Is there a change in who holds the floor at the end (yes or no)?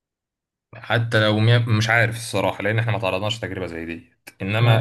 no